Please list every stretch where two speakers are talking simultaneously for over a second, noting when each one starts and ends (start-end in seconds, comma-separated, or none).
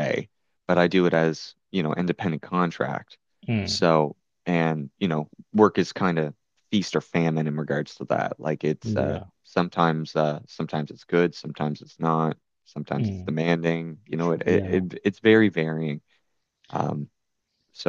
none